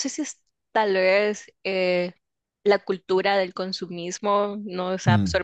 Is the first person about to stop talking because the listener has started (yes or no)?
no